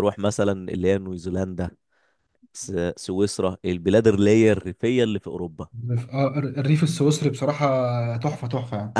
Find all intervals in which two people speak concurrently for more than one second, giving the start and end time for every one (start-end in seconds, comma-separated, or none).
none